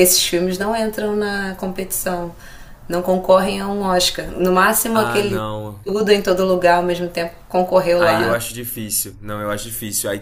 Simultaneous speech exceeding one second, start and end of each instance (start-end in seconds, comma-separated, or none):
none